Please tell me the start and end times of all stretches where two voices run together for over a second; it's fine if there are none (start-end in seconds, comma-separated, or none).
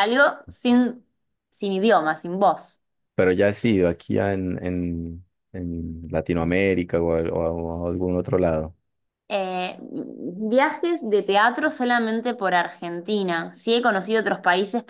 none